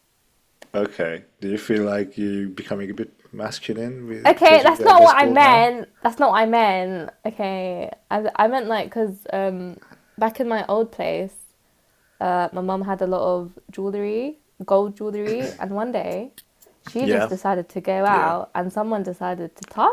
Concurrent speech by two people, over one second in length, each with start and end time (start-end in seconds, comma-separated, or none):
4.3-5.7